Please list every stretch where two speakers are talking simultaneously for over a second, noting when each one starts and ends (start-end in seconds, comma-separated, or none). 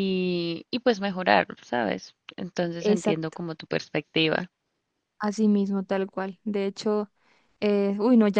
none